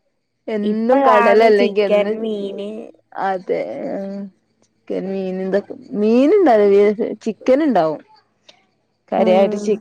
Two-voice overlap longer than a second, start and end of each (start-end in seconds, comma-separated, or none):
0.7-2.2